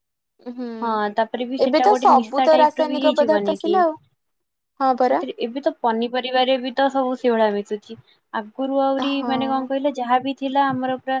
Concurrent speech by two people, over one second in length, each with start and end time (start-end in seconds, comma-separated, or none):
1.6-3.7